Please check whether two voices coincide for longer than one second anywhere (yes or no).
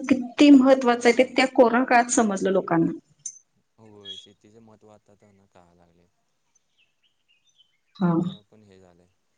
no